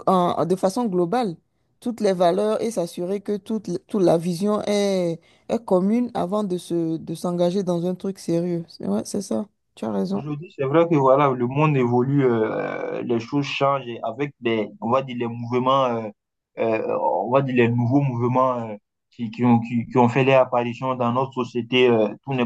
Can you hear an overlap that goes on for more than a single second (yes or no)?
no